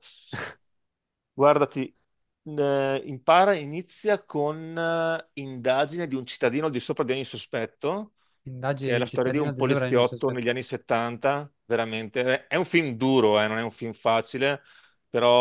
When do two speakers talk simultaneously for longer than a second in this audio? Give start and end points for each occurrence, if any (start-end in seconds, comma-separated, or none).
8.8-10.4